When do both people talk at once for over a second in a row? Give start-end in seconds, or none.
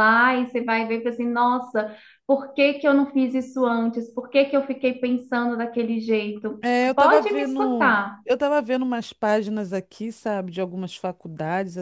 6.6-8.2